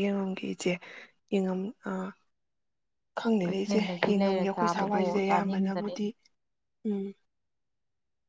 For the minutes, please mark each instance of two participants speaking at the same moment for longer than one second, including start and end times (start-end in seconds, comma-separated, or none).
3.5-5.9